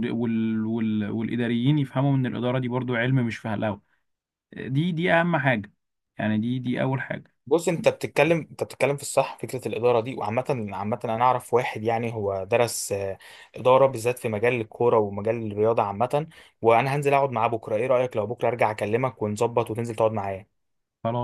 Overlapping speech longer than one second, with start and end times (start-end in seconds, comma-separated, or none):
none